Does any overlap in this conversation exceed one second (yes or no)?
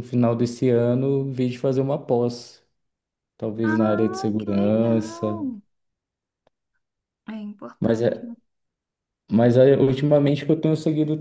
yes